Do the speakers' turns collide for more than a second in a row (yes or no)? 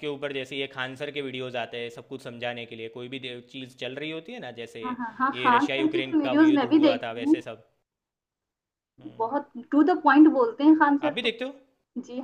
yes